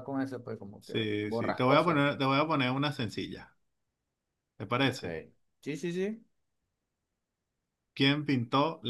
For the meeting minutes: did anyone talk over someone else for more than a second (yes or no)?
yes